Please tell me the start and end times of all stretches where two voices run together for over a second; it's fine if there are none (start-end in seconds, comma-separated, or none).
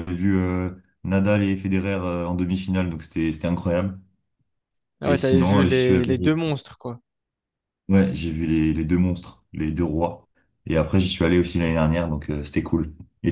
5.1-6.4